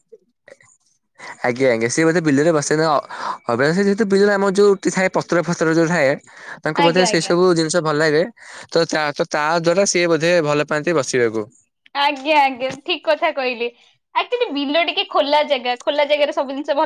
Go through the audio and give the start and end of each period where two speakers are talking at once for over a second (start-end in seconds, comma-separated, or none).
none